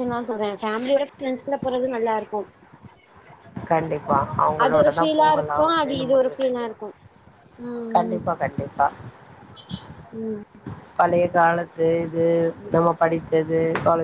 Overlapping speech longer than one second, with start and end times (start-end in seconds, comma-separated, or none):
4.6-6.8